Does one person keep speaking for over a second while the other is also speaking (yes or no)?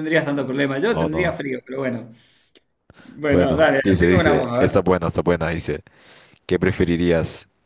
yes